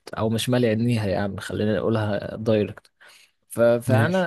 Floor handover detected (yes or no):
no